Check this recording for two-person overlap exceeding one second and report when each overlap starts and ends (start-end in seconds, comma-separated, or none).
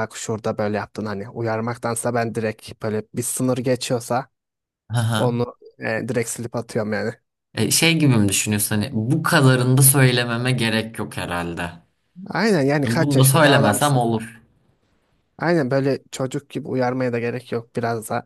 12.8-14.0